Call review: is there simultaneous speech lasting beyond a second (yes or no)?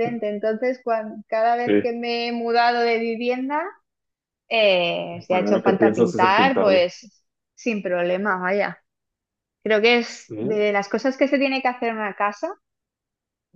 yes